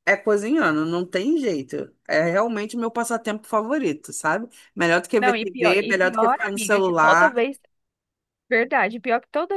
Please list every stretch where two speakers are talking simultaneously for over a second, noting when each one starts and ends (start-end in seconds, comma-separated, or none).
5.2-7.4